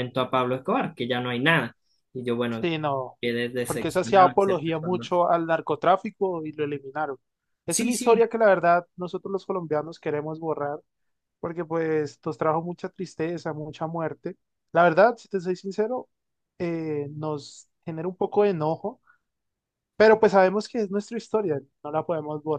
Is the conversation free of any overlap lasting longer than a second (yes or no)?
no